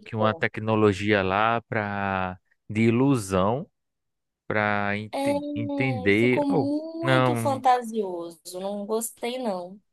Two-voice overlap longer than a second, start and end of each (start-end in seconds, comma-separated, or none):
5.5-7.6